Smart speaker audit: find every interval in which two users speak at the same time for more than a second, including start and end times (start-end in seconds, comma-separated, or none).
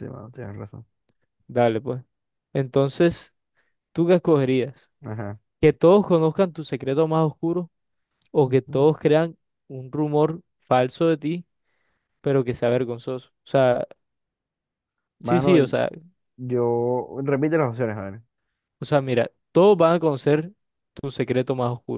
none